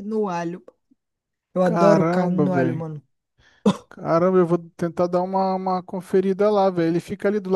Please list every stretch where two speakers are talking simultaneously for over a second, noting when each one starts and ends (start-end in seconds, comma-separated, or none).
1.6-2.8